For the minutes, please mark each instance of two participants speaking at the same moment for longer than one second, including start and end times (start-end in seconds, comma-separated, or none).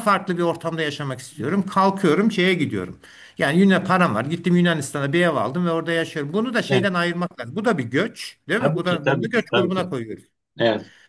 8.6-9.9